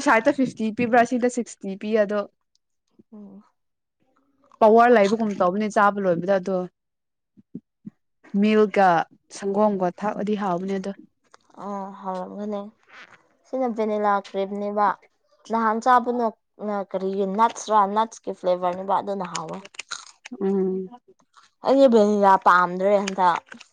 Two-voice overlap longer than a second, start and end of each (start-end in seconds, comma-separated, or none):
none